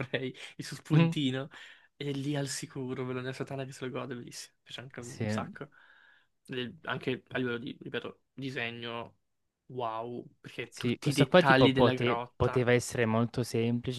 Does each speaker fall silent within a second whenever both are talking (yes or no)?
no